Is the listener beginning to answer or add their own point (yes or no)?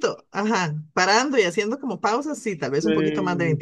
yes